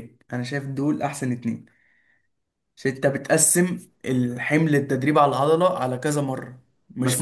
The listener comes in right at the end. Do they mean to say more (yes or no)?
yes